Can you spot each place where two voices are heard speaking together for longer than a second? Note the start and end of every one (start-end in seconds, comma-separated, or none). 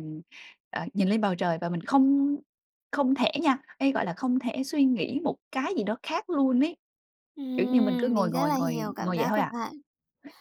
7.6-9.5